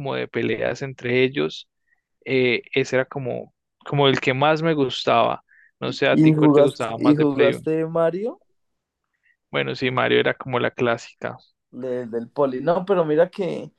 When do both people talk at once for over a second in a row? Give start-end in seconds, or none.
6.1-7.5